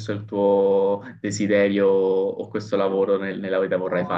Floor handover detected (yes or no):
no